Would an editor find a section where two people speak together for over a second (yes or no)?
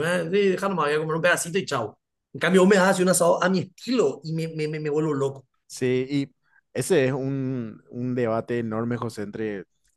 no